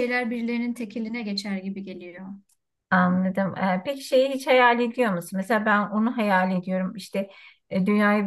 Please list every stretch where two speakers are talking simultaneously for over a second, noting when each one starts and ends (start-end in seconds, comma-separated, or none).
none